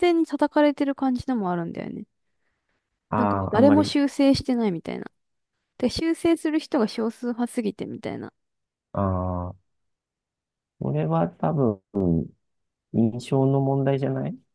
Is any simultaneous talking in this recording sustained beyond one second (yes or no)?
no